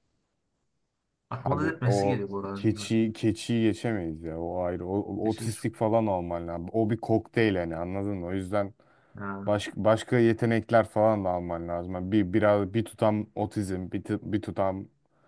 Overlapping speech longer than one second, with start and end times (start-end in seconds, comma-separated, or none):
1.5-3.0